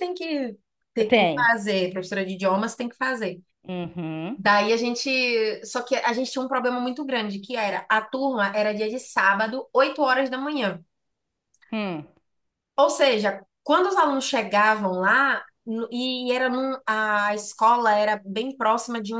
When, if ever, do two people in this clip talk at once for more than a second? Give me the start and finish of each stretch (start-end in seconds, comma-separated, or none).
none